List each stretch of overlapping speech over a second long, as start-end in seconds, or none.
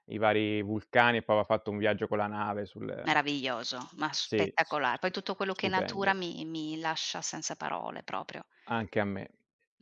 4.2-6.2